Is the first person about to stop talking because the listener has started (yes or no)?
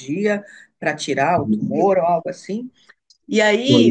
no